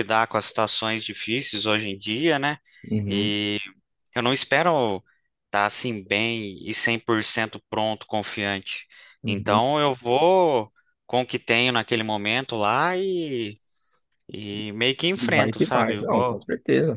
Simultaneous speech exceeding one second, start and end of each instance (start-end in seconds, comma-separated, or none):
15.2-16.5